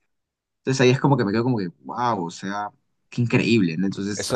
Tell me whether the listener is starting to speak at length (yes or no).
yes